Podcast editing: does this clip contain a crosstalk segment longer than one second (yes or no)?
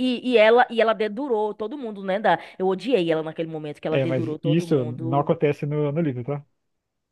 yes